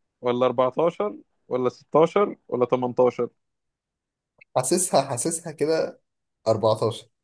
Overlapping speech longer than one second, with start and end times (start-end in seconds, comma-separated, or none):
none